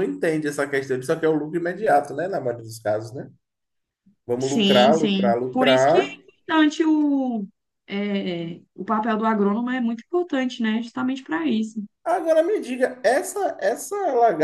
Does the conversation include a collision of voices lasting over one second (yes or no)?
yes